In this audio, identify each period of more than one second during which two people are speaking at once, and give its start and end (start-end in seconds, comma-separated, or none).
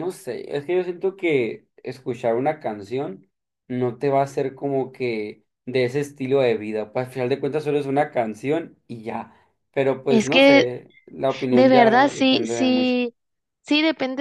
11.5-13.0